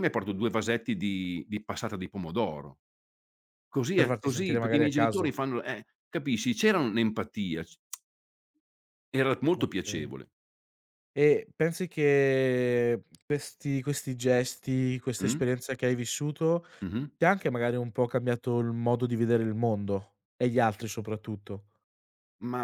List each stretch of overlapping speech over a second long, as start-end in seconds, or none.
3.9-5.3